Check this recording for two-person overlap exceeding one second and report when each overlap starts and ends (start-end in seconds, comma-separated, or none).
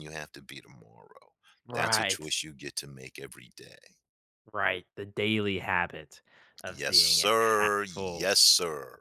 6.7-8.3